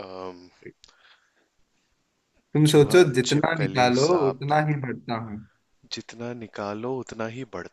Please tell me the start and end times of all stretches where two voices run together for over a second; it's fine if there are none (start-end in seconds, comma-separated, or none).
2.7-4.6